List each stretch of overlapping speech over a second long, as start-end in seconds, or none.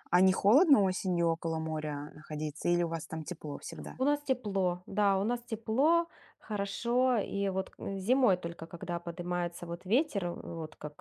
none